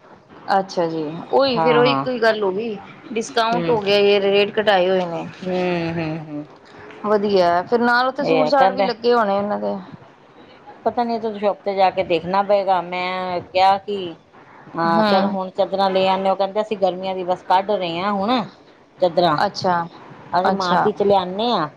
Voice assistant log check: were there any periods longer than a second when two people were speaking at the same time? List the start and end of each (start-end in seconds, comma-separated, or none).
none